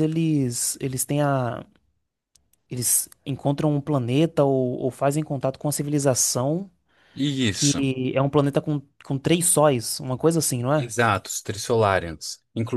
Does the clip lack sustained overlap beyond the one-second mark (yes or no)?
yes